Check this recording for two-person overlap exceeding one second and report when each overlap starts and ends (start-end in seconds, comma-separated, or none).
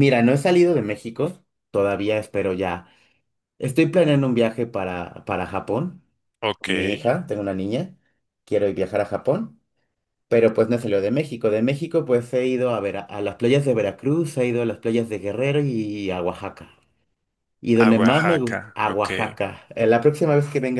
17.8-19.1